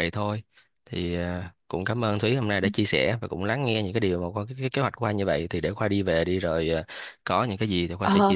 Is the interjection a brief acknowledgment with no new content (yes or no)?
no